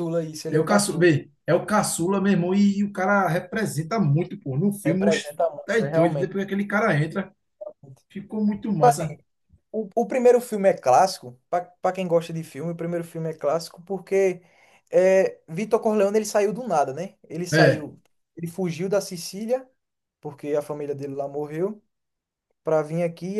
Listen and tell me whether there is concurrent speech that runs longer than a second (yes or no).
yes